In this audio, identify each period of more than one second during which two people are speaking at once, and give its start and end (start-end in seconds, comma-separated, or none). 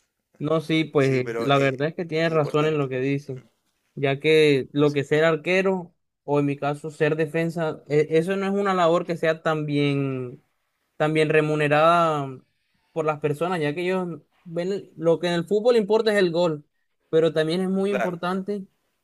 1.0-2.9